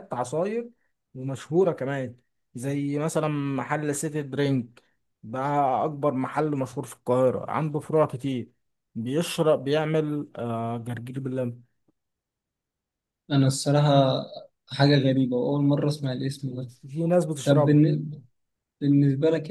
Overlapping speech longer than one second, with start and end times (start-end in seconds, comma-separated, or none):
none